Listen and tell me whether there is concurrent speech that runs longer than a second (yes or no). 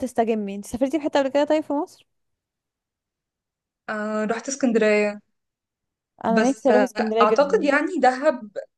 yes